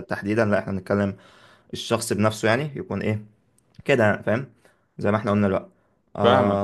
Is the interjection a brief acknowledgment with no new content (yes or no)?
yes